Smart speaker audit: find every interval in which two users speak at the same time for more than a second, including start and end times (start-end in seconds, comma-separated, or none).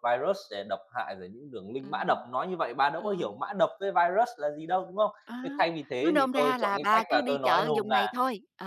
6.0-8.1